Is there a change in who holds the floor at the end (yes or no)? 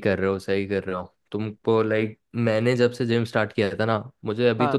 no